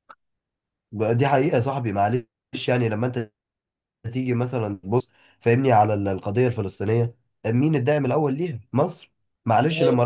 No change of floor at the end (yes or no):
yes